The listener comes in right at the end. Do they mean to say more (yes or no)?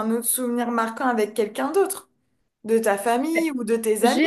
yes